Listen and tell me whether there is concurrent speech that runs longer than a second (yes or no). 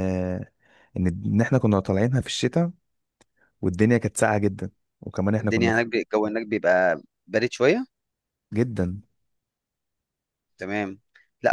no